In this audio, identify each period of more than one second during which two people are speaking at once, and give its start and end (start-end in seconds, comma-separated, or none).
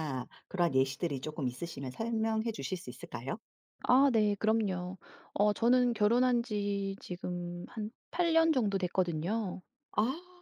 none